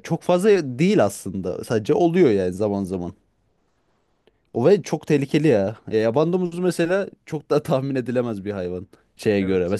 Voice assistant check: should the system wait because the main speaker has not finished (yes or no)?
yes